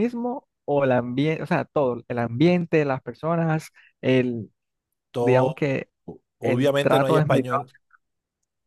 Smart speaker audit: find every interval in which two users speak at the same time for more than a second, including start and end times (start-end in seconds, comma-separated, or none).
6.4-7.6